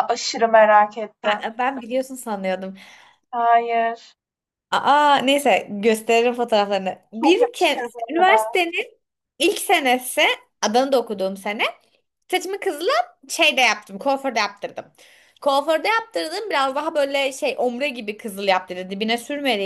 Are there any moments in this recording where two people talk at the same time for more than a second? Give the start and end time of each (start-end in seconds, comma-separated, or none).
7.2-8.6